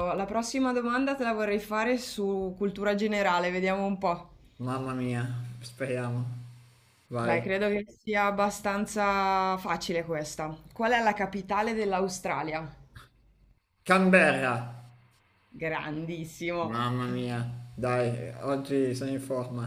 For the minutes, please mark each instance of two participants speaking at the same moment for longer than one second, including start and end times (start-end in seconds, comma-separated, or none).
none